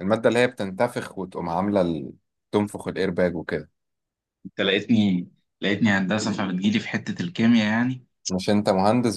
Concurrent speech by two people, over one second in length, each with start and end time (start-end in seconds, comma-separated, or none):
none